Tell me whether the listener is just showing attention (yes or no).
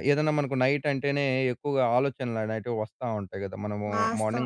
no